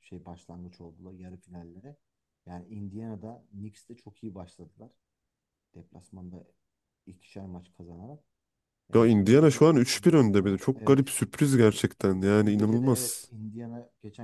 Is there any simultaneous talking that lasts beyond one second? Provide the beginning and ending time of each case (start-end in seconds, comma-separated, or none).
8.9-11.1, 12.0-13.3